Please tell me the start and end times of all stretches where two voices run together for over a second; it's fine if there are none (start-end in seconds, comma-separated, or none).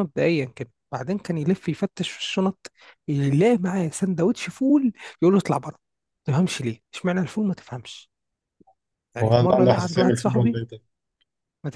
9.2-10.6